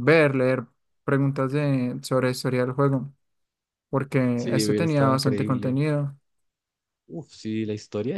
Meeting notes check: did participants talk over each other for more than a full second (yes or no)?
yes